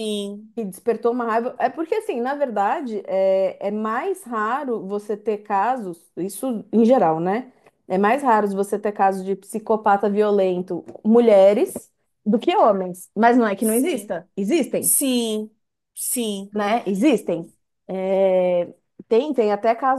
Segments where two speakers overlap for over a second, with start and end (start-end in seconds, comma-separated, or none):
none